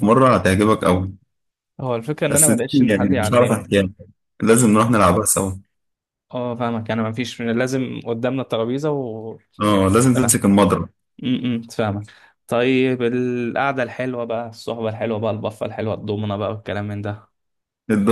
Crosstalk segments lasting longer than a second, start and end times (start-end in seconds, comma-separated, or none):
2.3-3.7